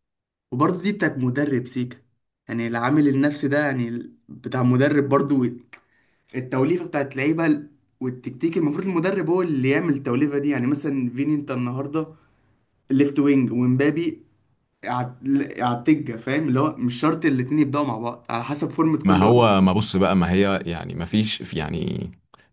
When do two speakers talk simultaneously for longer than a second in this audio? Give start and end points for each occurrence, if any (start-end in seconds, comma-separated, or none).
none